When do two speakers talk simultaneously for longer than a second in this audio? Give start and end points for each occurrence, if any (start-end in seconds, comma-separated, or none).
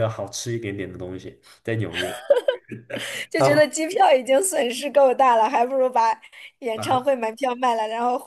none